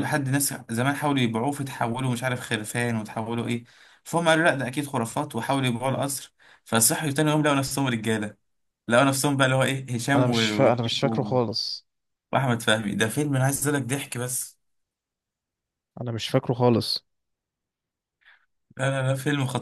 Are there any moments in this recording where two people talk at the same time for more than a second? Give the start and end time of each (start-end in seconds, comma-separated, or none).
10.2-11.4